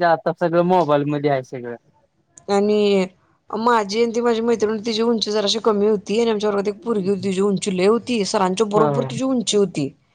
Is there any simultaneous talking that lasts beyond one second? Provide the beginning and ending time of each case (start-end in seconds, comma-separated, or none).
none